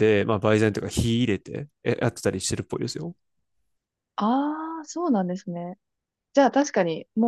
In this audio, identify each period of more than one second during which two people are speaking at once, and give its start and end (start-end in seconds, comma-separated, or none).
none